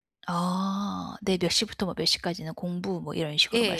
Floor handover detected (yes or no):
yes